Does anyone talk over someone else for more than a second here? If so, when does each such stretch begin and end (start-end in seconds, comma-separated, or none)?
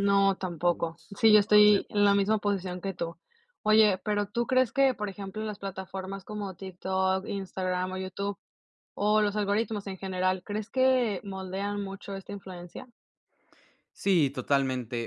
0.6-2.2